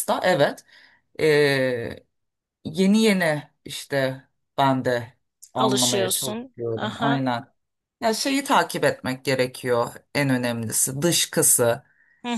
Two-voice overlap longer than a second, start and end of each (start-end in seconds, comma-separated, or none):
5.6-7.2